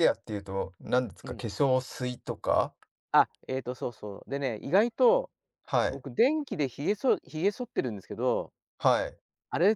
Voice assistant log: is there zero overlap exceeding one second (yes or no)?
yes